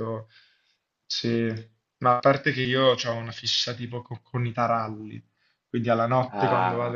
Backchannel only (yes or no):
yes